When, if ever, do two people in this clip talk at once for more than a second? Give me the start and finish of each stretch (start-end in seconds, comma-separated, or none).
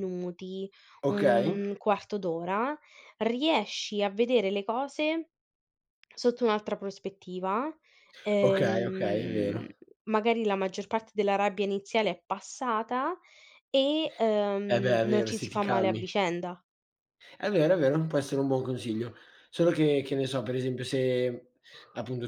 8.4-9.7, 14.7-16.0